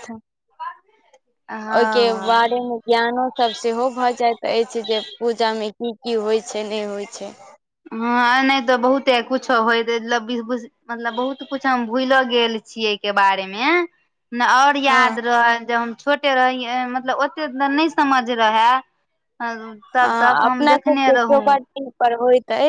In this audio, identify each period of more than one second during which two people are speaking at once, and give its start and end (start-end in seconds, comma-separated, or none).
20.0-21.4